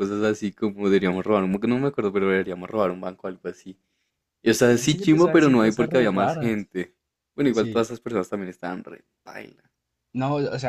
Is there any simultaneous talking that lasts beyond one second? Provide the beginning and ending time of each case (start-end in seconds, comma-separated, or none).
4.8-6.7